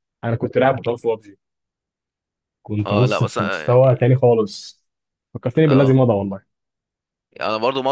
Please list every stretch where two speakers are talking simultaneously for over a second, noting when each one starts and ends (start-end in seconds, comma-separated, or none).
2.9-4.1